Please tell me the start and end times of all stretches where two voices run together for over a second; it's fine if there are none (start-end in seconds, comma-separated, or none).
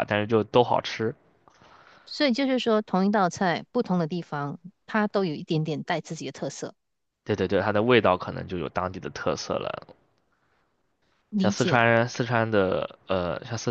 none